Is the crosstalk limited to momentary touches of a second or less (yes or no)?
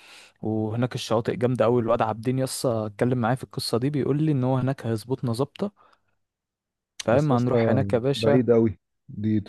no